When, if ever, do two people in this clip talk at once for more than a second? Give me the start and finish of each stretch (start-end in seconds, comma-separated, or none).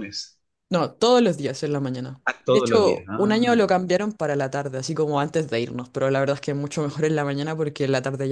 2.3-3.8